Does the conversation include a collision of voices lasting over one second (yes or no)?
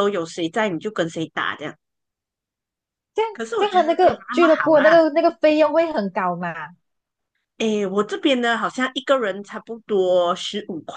yes